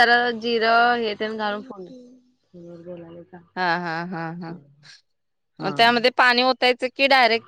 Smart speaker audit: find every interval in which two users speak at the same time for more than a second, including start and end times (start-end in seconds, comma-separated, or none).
none